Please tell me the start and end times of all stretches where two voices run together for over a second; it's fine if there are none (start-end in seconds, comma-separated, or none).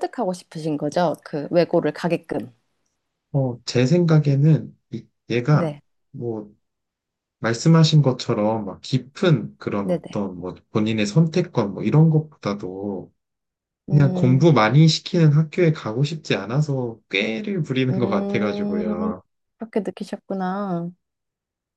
17.9-19.1